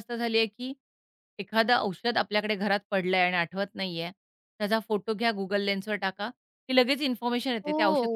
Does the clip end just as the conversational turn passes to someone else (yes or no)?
yes